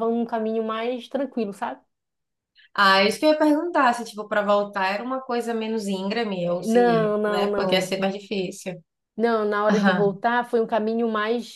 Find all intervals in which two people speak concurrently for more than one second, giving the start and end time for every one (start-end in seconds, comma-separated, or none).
6.6-8.0